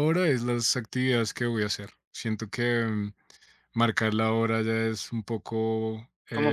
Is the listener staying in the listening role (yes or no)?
no